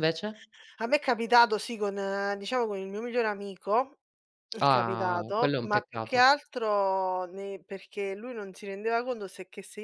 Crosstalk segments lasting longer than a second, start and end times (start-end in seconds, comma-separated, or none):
4.6-6.3